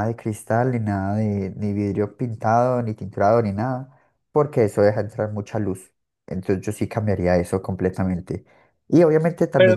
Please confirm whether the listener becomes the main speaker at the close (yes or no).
no